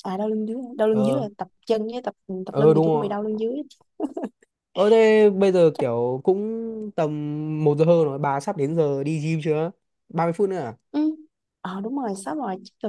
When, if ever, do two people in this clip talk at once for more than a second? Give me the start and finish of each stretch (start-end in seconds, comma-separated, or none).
none